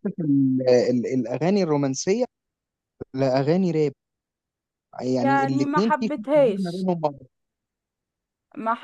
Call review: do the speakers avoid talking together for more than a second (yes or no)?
no